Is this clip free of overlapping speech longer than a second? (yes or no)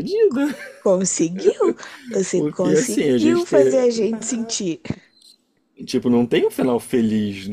no